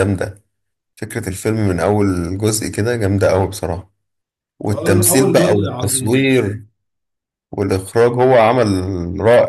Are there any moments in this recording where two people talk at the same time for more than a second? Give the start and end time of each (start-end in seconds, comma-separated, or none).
4.7-6.3